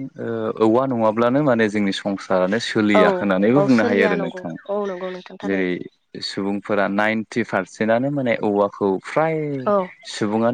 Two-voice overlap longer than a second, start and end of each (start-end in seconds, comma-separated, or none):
2.8-4.6